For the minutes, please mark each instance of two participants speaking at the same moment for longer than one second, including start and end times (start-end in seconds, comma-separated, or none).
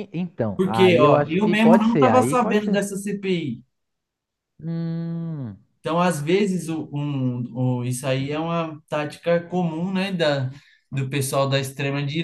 0.5-2.8